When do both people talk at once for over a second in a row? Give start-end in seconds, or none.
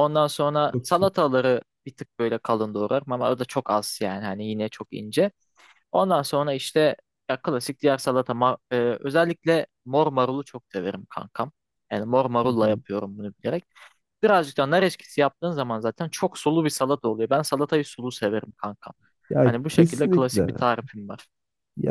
19.4-20.6